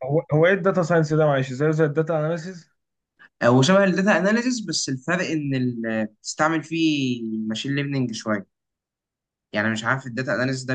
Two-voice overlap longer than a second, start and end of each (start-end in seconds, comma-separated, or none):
none